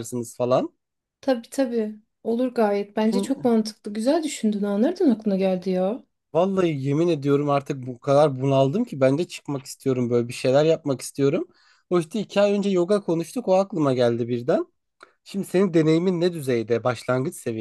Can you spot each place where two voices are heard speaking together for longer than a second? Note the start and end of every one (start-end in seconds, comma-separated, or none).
none